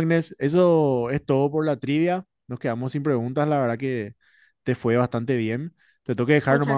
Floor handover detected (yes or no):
no